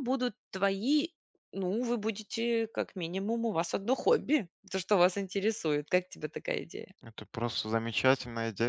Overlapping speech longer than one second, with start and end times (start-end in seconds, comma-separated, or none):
none